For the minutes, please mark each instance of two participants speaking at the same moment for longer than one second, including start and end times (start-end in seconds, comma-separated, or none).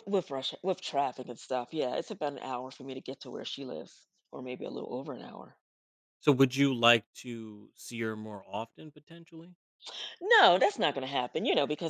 none